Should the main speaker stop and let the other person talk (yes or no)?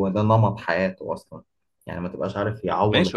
yes